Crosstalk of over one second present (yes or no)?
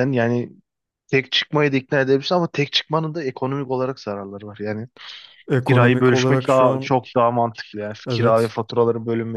yes